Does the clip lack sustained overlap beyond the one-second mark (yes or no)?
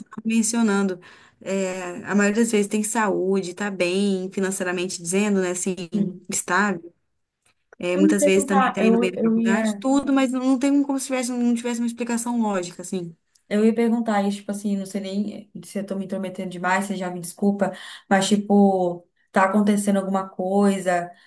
no